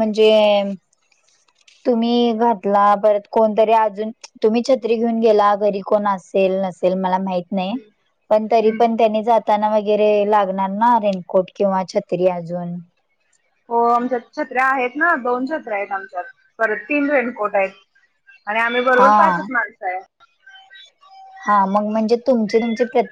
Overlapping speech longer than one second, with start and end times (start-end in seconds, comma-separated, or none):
none